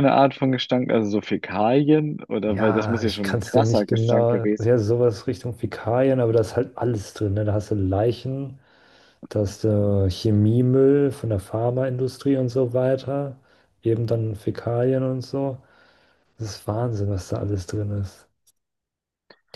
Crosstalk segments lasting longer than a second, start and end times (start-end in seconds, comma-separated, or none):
2.5-4.7